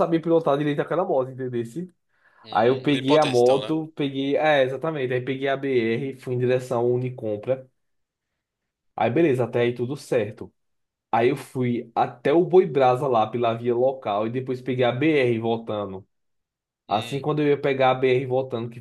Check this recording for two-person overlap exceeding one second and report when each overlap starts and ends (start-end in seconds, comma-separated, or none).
2.5-3.8